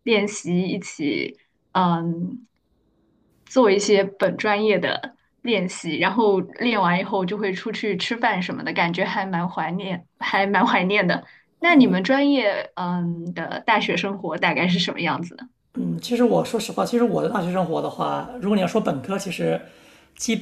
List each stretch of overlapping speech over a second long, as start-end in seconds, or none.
none